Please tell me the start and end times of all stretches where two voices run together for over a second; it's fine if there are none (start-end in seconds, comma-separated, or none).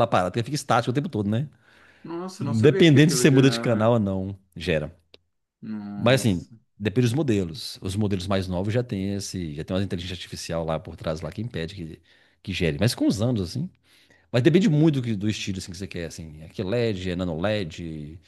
2.4-3.9